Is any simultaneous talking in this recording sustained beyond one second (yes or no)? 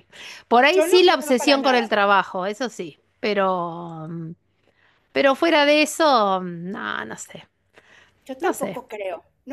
yes